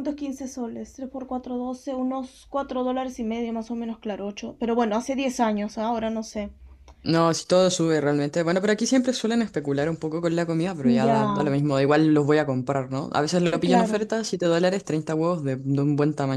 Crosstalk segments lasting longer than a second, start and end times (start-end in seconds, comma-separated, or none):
none